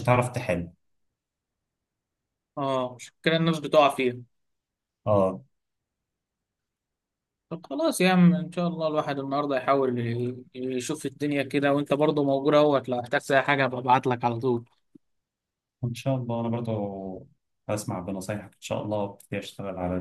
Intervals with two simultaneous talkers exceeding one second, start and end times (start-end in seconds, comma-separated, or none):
none